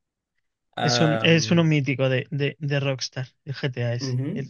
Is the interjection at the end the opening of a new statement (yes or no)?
yes